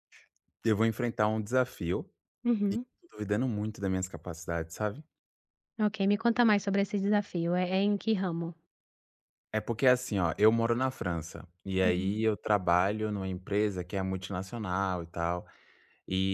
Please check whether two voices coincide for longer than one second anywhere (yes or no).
no